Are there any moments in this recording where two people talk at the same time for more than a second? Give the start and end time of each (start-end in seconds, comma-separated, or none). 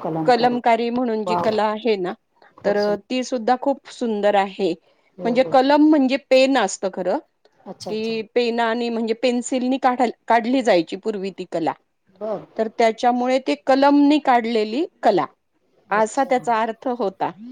none